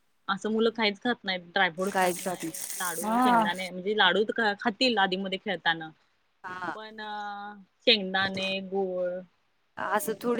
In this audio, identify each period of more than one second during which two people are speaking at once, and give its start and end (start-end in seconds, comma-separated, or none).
1.9-3.6